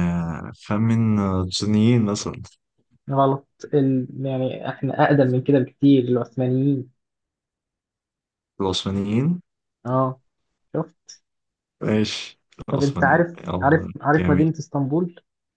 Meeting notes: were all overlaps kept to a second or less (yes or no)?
no